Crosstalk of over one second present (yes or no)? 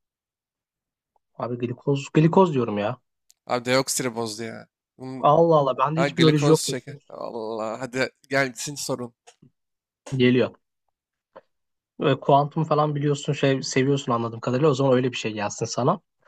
yes